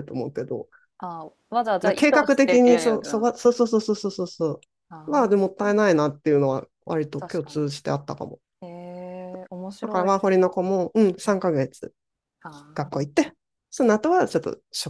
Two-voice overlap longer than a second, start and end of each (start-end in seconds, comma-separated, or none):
1.8-3.3